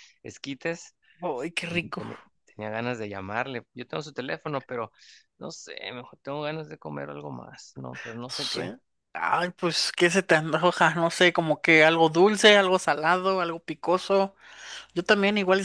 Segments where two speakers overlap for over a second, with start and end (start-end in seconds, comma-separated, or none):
none